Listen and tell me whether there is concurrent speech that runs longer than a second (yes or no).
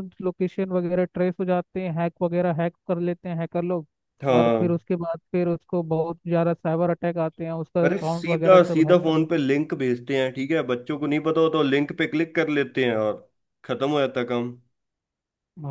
yes